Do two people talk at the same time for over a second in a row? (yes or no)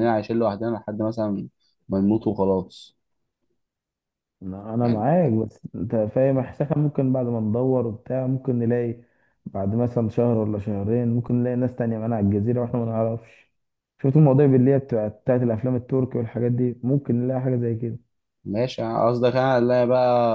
no